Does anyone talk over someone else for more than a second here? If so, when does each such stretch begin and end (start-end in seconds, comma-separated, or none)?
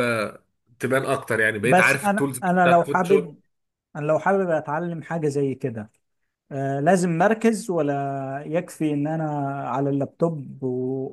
1.6-3.3